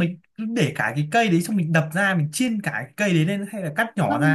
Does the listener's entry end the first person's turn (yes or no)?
yes